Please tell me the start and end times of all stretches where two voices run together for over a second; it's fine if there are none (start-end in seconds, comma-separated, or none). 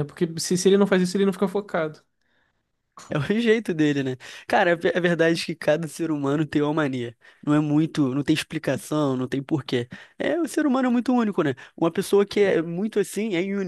none